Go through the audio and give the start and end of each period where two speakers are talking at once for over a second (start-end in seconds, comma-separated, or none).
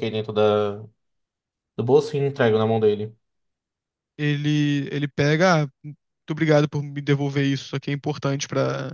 none